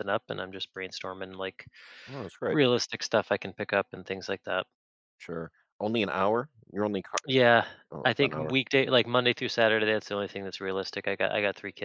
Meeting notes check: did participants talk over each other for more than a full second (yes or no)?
no